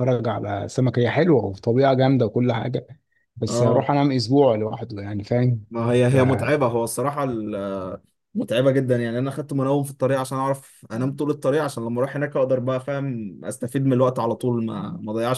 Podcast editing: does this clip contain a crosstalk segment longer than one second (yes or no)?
no